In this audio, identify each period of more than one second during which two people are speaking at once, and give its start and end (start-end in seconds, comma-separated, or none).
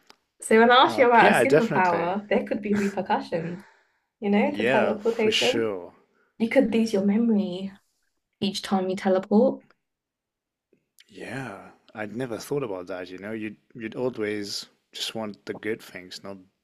0.9-2.1, 4.5-5.7